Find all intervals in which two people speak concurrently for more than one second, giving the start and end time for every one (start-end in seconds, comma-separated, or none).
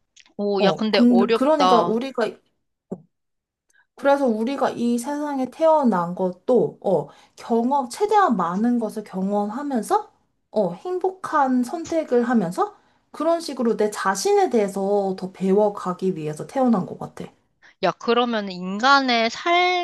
0.6-2.0